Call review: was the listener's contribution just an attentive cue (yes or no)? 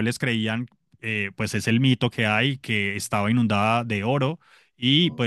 yes